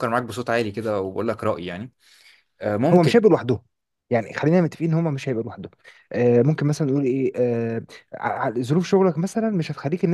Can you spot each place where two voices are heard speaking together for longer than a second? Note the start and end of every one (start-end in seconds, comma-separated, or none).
none